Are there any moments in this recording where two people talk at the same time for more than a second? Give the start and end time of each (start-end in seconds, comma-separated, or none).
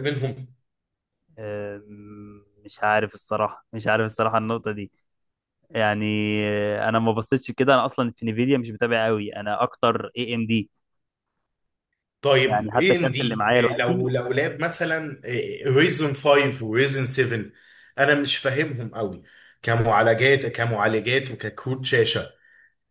12.5-14.1